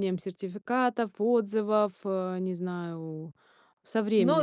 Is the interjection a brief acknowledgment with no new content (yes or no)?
no